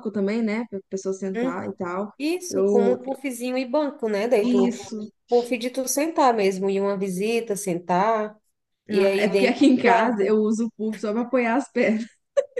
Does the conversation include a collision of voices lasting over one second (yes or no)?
yes